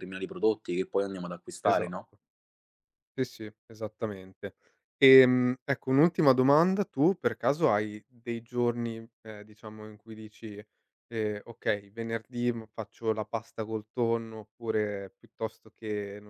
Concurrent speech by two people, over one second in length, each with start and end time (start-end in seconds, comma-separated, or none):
none